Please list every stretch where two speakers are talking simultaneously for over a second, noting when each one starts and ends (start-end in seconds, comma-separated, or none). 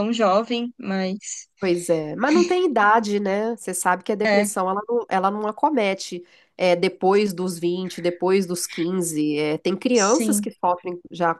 none